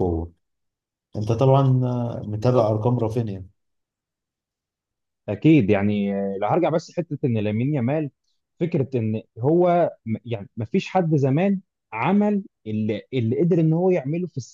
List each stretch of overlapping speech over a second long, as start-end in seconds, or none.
none